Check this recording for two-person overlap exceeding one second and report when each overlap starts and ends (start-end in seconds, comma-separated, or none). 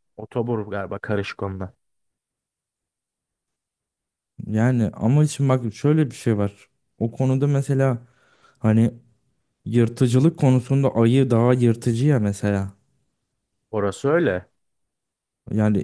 none